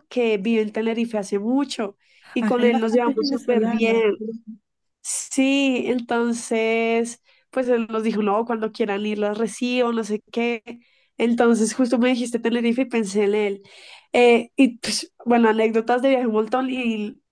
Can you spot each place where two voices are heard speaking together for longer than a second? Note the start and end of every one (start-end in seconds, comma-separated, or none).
2.4-4.0